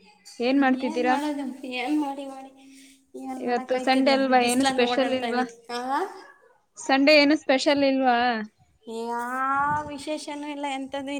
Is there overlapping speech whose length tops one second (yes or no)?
yes